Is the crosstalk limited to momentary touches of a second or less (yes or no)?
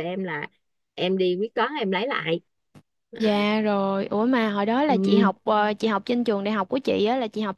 yes